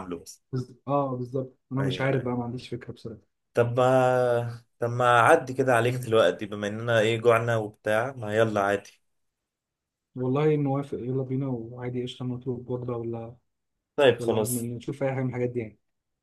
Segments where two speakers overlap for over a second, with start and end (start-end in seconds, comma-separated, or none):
none